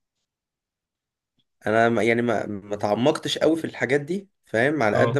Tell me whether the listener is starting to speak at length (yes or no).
no